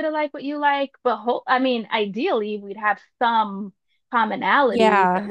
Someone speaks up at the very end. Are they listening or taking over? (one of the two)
listening